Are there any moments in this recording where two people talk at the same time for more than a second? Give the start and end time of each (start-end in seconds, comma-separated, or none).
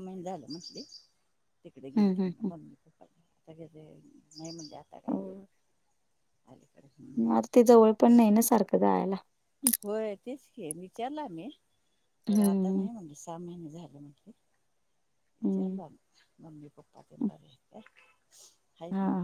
none